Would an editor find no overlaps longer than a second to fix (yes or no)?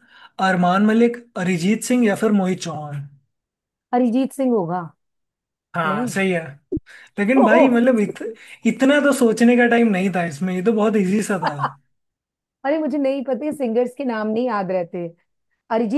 yes